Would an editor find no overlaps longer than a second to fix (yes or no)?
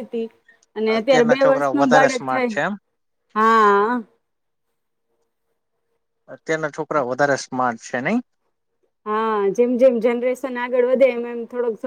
no